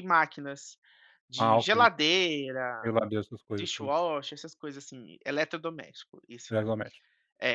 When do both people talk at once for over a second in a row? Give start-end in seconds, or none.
none